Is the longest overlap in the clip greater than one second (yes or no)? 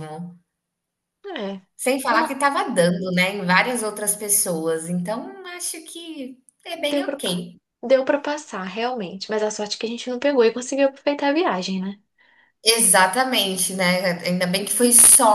no